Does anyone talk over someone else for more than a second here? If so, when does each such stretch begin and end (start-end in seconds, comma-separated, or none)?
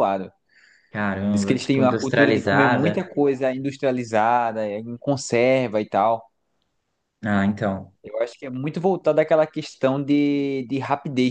1.3-3.1